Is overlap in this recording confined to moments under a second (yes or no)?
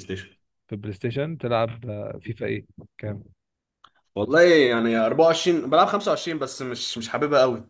yes